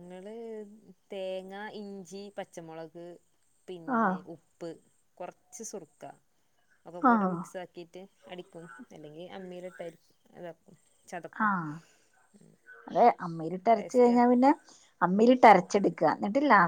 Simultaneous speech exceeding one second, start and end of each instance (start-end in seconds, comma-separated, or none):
none